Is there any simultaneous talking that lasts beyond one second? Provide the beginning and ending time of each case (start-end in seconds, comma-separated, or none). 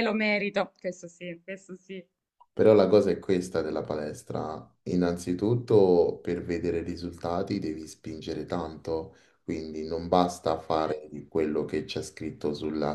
none